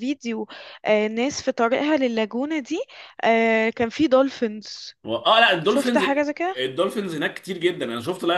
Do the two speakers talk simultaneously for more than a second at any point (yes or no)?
no